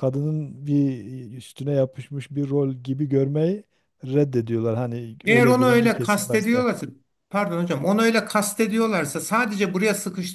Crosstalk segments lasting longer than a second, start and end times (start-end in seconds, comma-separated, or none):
5.3-6.7